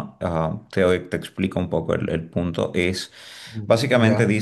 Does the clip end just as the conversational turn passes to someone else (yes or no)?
no